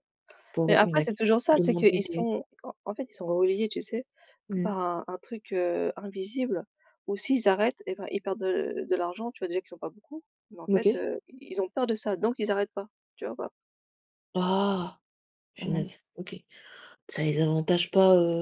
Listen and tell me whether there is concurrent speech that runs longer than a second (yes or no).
yes